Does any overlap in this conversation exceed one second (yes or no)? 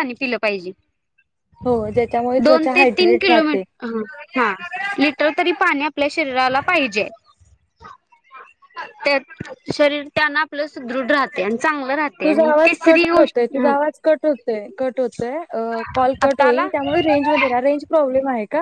no